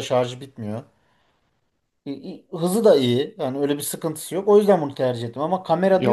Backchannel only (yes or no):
no